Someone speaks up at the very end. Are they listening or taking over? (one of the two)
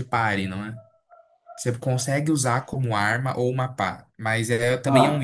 listening